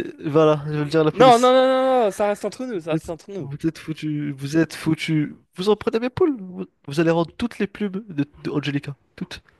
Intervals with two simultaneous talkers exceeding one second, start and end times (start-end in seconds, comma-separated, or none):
none